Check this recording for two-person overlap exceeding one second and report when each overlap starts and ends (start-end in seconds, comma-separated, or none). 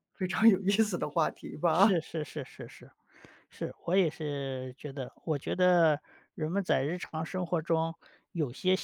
none